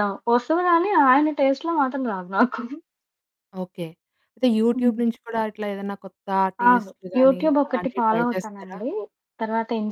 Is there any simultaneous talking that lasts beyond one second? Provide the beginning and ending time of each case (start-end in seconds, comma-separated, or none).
6.7-8.8